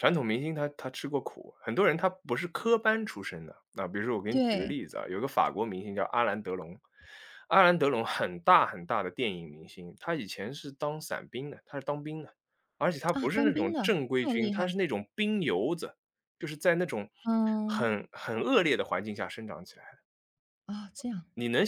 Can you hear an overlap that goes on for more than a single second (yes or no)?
yes